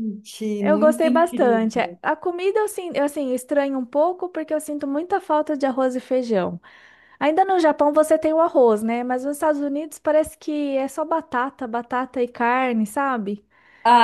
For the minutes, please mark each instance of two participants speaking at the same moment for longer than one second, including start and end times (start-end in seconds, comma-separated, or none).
0.6-2.0